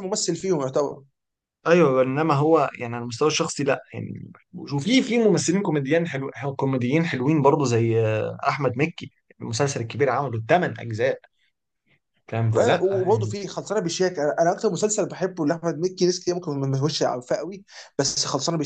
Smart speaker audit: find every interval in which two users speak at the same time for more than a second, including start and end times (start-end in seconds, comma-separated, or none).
none